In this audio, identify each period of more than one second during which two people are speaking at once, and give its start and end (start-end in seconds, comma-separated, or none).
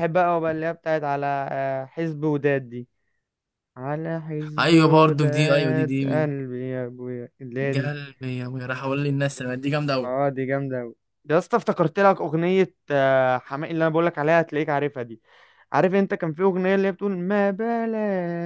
4.6-6.3